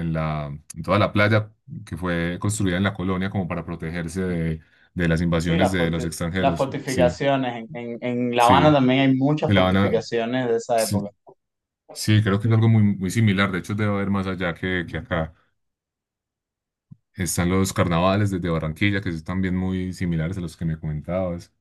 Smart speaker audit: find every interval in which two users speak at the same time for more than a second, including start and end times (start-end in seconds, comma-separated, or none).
5.4-7.2